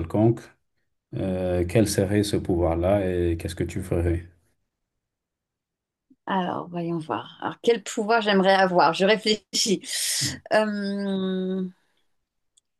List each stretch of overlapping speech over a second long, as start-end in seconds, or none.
none